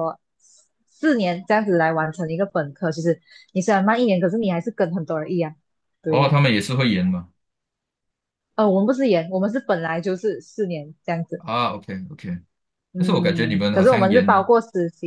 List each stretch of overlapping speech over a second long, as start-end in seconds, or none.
13.0-14.5